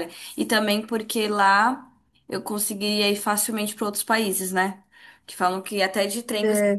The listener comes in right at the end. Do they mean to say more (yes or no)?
no